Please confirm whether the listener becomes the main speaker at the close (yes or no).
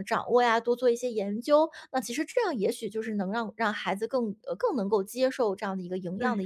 yes